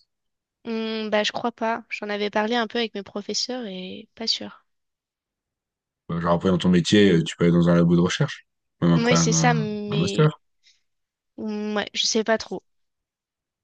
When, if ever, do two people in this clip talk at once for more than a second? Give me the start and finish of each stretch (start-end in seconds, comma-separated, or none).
9.0-10.3